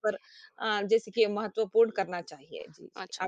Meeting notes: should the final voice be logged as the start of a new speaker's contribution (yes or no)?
yes